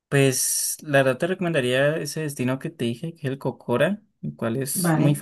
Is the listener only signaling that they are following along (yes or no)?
yes